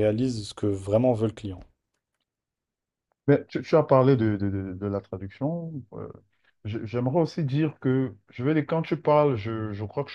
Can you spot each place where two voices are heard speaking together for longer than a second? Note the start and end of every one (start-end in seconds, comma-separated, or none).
none